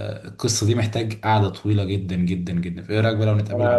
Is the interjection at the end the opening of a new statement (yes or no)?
yes